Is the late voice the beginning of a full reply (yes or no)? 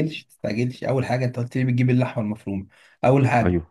no